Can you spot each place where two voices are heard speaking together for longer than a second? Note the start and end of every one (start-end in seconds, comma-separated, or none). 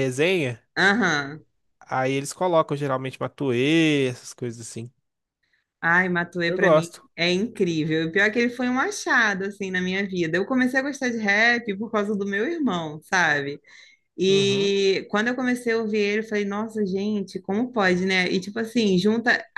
none